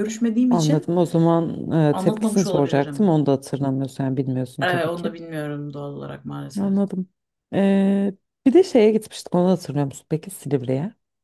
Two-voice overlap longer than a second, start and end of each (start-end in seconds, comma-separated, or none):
1.9-3.1